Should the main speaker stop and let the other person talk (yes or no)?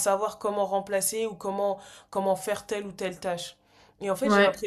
no